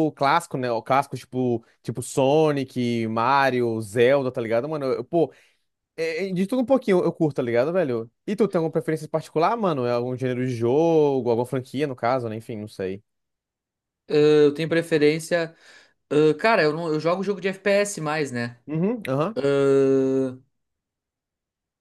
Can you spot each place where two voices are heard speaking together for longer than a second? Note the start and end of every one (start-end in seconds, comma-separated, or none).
none